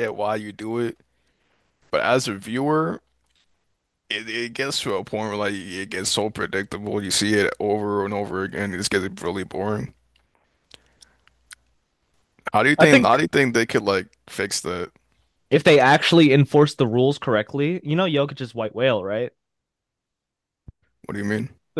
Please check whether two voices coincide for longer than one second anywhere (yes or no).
no